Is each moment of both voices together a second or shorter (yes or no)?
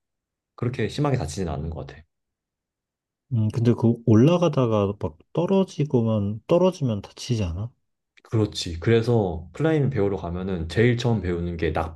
yes